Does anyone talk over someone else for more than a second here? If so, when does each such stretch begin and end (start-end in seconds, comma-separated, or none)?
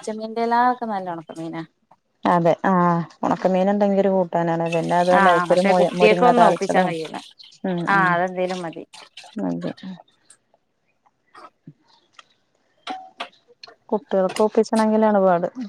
5.2-6.8